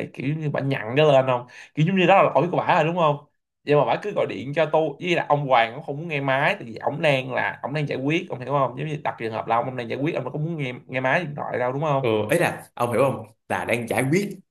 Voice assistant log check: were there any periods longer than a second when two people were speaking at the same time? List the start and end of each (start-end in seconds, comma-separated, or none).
none